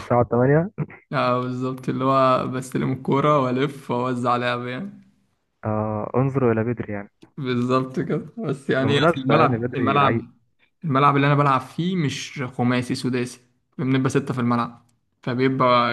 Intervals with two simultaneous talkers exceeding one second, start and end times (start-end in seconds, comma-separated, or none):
8.8-10.2